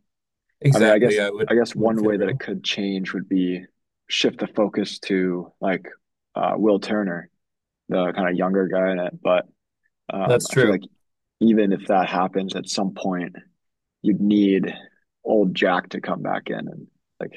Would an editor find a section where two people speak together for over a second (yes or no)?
yes